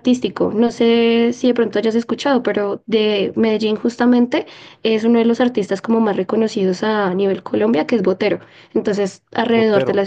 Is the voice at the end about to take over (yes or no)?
no